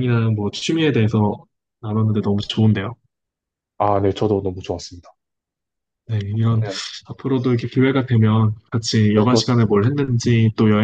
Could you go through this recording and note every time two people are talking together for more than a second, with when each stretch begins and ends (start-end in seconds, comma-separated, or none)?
none